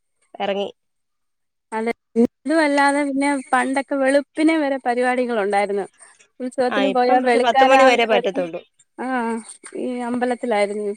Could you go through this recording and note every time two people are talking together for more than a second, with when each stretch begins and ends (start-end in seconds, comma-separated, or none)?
6.8-8.4